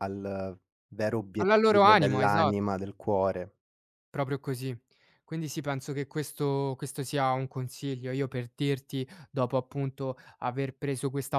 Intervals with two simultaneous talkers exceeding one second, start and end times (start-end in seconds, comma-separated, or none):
1.4-2.6